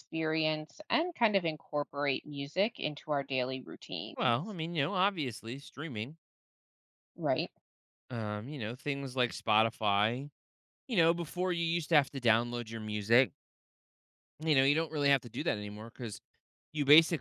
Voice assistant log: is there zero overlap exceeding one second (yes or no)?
yes